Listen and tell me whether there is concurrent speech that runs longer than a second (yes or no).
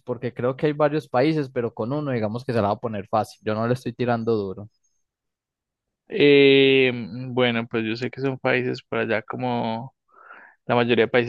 no